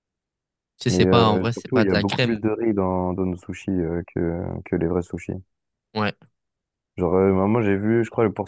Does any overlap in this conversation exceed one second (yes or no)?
yes